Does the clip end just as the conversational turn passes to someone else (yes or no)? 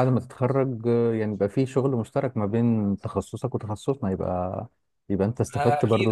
yes